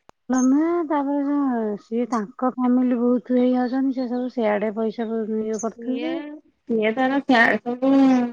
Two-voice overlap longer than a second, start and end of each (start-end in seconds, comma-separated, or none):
none